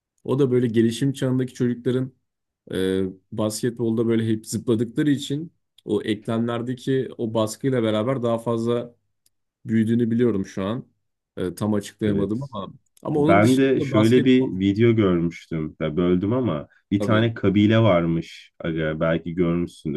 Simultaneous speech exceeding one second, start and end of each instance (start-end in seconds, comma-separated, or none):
13.2-14.6